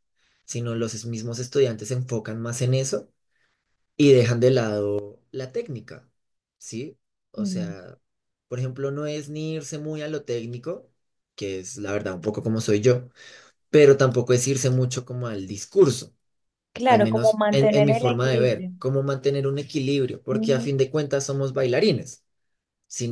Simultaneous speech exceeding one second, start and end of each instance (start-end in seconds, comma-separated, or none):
16.9-18.7